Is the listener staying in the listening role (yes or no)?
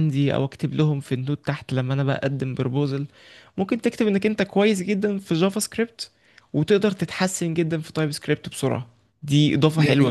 no